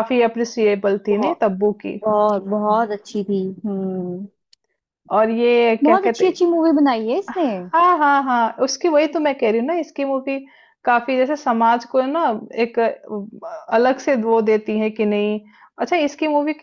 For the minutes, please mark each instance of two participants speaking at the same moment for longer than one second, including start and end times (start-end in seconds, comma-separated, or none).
none